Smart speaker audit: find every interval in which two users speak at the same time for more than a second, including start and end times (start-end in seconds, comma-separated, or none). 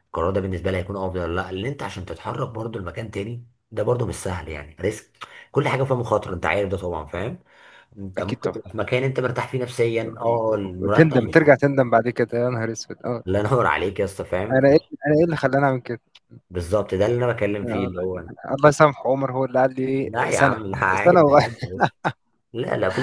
20.0-21.5